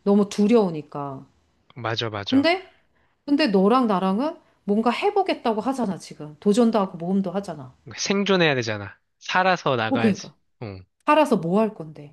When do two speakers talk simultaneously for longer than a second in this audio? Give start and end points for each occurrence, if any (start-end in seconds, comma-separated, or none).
none